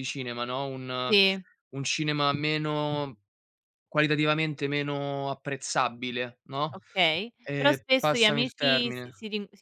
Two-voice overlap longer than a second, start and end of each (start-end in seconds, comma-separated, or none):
7.4-9.1